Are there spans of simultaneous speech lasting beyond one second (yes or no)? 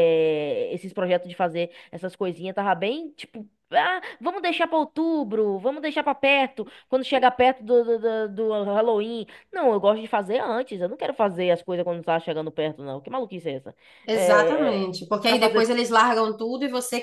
yes